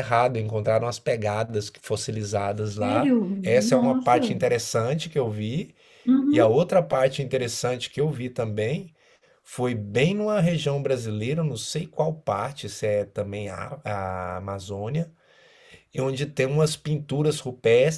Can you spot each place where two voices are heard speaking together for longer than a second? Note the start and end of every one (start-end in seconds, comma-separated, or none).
2.8-4.3